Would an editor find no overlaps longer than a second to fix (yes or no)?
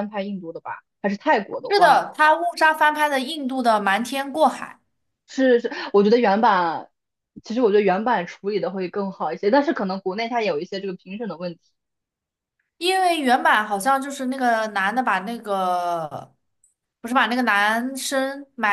yes